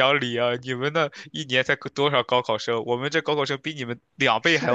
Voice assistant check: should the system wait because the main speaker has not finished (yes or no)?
no